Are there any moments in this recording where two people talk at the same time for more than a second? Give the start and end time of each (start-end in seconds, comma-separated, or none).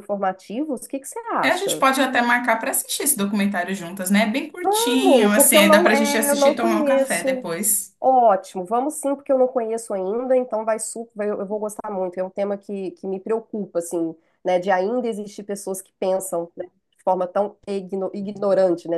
4.7-7.5